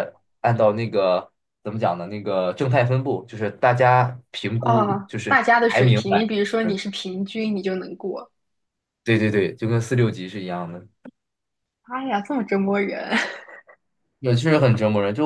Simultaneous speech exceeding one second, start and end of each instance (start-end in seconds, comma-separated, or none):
4.6-6.3